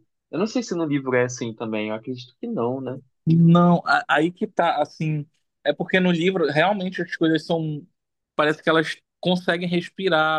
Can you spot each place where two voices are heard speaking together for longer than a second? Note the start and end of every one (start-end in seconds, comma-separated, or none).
none